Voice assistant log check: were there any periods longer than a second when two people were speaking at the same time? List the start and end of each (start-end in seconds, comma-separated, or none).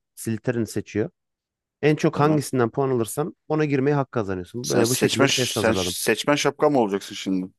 4.7-6.0